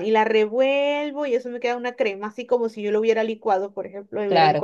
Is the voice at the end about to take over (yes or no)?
no